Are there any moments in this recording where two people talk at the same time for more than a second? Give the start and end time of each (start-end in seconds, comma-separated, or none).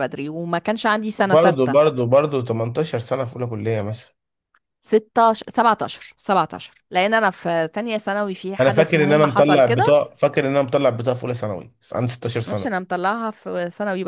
8.6-10.0